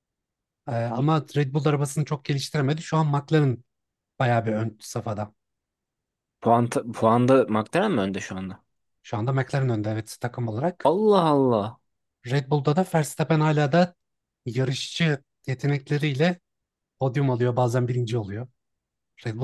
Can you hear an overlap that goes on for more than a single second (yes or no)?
no